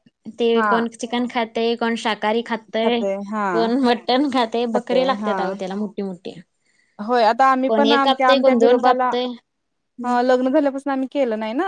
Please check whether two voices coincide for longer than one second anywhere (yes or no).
yes